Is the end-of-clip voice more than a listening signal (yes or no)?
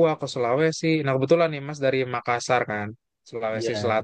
no